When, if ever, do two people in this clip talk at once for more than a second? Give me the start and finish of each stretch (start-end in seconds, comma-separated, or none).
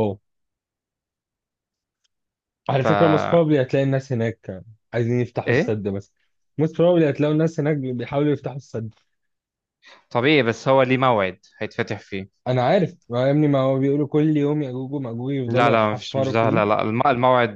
15.5-16.8